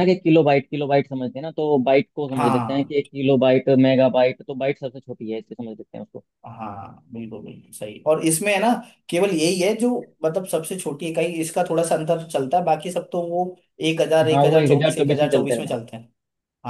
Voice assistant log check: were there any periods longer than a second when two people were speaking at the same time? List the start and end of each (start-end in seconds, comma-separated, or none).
14.3-15.8